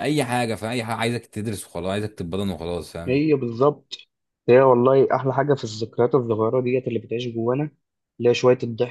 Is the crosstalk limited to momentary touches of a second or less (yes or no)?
yes